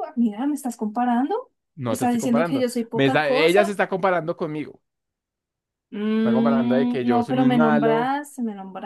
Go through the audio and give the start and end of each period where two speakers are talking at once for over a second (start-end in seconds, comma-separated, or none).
1.8-3.8, 6.2-8.1